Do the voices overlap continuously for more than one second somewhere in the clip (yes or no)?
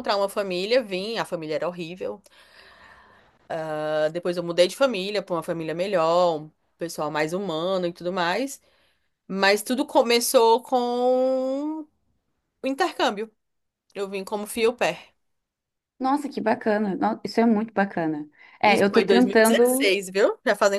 yes